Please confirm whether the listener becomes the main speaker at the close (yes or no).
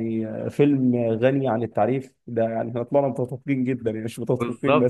yes